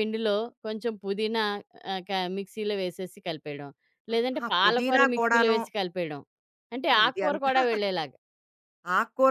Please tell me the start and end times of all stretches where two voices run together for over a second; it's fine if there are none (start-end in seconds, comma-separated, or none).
4.1-5.6